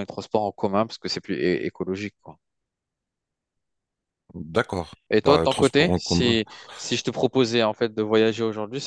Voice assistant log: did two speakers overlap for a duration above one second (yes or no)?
yes